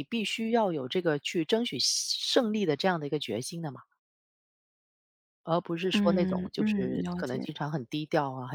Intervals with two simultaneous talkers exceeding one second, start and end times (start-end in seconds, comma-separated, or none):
5.9-7.5